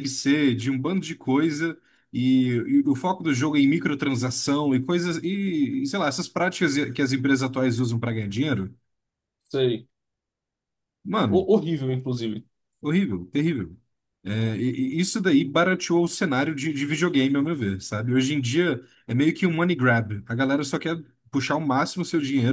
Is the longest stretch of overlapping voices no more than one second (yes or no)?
yes